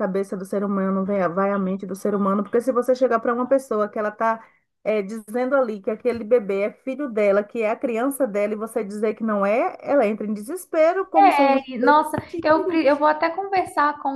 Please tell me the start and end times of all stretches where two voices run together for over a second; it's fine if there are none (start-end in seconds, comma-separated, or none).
11.2-12.9